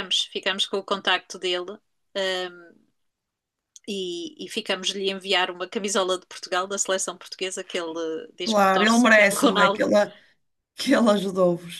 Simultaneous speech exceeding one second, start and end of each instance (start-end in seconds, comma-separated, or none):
8.4-9.9